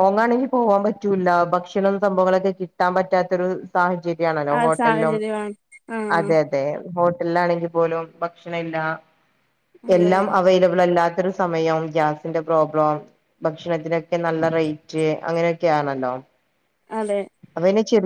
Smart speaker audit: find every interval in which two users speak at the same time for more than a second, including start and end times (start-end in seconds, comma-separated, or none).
none